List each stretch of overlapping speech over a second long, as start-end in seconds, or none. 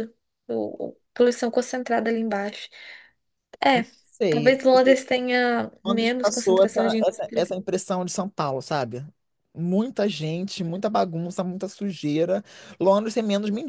5.8-7.5